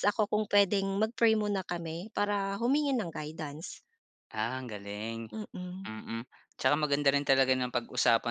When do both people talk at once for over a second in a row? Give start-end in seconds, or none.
none